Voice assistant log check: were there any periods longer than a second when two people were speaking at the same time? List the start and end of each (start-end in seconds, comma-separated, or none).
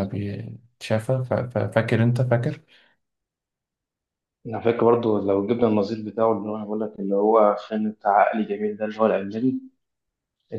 none